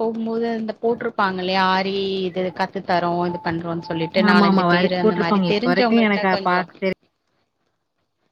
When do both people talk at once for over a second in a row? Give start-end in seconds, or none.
4.3-6.3